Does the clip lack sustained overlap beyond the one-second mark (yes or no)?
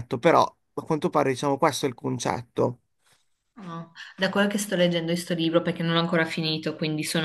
yes